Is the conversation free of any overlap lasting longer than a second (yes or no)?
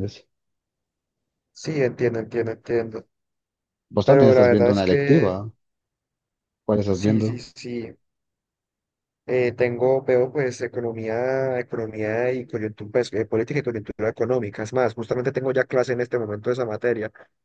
no